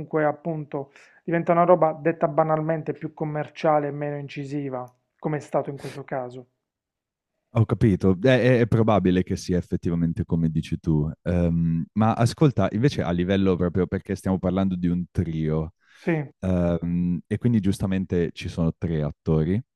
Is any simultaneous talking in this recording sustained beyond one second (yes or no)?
no